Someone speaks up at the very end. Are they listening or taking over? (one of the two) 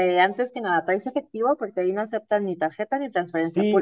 taking over